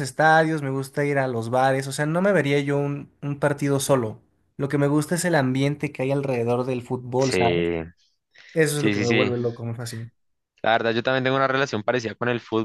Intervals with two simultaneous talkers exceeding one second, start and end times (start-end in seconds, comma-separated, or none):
none